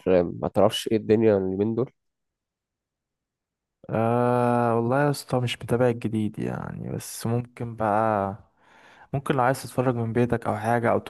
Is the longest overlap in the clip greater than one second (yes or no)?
no